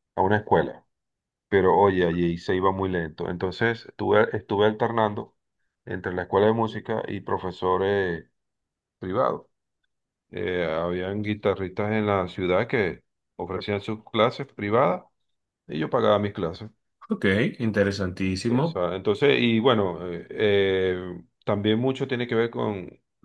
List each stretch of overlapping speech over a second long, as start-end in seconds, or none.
none